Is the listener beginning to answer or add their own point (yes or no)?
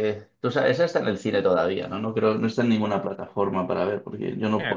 no